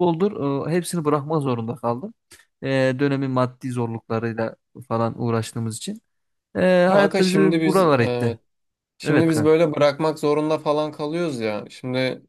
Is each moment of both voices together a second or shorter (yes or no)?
no